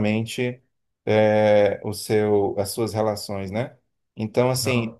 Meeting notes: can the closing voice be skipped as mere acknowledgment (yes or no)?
yes